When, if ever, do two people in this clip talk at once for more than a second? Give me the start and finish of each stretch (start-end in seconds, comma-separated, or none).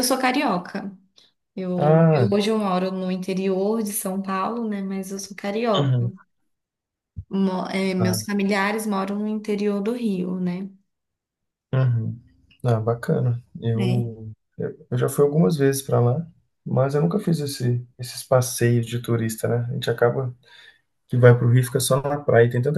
none